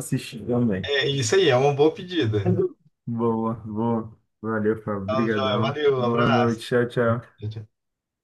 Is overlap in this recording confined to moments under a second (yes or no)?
no